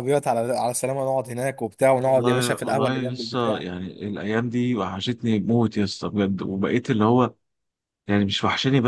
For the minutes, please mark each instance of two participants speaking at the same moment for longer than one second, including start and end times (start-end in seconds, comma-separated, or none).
2.1-3.7